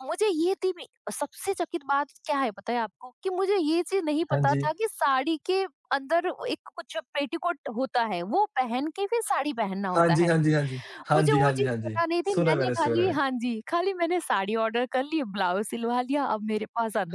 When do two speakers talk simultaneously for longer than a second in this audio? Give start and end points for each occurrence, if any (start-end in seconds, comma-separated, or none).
11.1-13.2